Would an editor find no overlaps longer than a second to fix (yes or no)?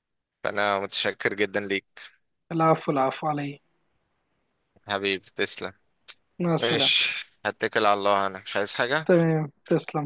yes